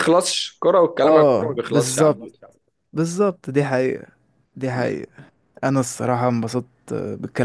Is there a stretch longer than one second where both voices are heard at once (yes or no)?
yes